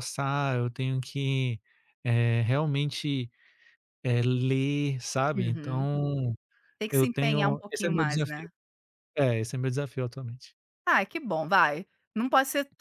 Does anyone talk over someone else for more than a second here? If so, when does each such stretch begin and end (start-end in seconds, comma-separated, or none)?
6.9-8.5